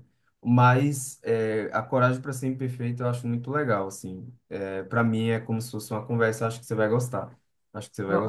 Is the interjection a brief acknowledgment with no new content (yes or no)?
no